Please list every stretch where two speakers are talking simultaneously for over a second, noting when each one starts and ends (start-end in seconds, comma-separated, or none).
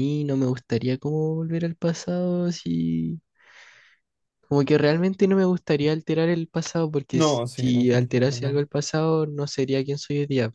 7.1-8.6